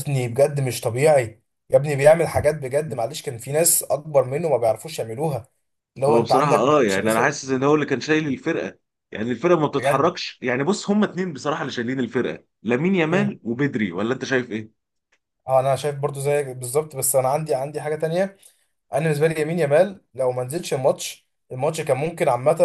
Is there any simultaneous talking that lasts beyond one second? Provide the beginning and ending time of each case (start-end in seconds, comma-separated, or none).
6.1-7.4